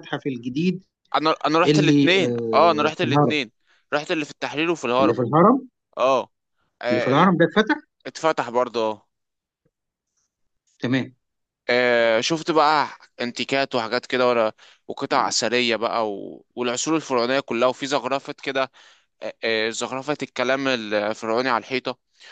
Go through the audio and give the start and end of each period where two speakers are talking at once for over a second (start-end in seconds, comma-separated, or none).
1.6-3.3